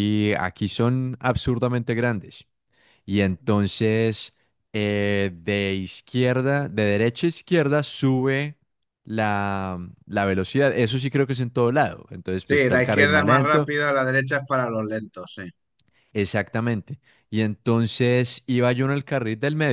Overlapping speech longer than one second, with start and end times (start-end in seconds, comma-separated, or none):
12.5-13.7